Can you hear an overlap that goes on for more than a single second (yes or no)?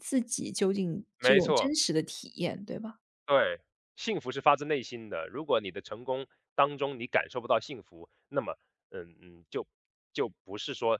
no